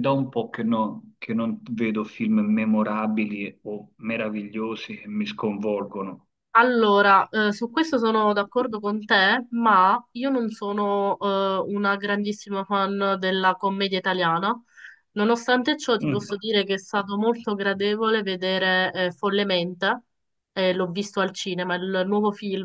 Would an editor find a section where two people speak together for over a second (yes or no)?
no